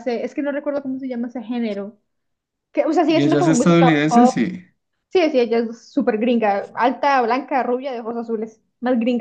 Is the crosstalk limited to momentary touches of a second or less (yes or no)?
no